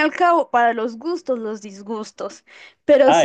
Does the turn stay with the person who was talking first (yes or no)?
no